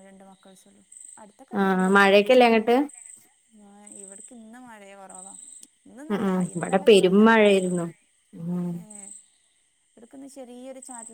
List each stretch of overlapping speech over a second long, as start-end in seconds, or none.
6.1-7.8